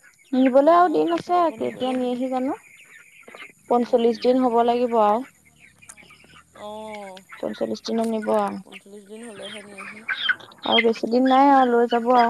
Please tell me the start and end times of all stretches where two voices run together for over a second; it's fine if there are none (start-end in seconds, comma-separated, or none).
0.5-2.1